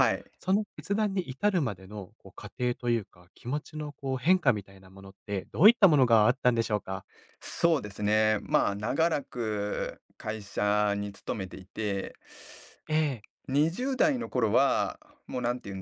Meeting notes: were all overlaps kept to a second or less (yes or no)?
yes